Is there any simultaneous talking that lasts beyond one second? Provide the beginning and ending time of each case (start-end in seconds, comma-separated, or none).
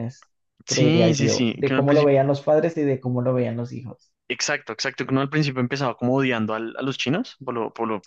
0.7-2.1